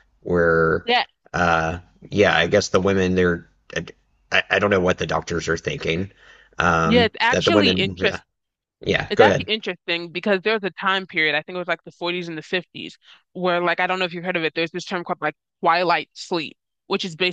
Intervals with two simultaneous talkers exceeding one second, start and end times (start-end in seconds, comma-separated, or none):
6.8-8.2